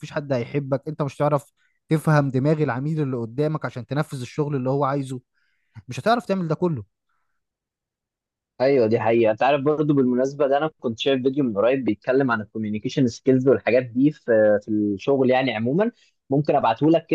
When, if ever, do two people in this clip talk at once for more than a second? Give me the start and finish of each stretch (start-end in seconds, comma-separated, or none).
none